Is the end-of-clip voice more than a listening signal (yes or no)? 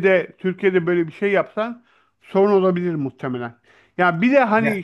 no